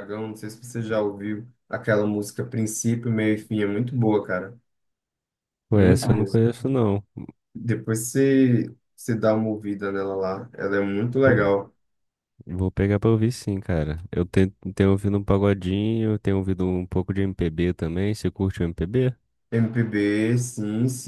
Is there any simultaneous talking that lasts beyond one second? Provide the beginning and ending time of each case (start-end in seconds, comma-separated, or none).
none